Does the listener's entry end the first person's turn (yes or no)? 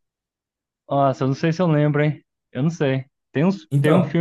no